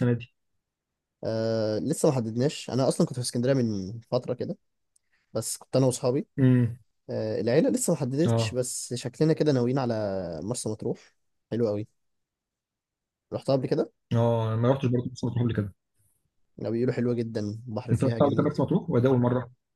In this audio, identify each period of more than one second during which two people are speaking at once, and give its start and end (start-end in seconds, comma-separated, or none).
none